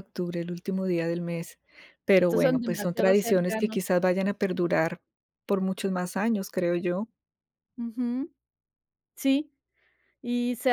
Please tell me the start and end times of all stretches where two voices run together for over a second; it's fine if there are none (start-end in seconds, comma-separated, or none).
2.2-3.8